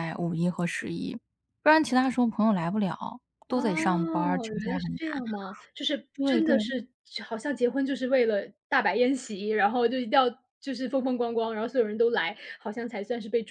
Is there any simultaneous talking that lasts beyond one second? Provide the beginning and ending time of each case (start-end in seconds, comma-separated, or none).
3.5-5.2